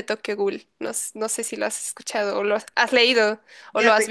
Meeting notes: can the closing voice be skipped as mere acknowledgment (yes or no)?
no